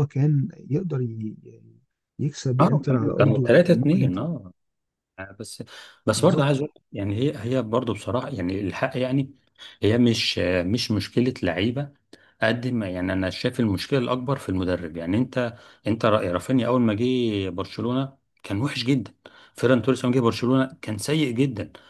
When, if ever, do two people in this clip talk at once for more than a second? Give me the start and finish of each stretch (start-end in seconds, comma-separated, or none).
2.6-4.3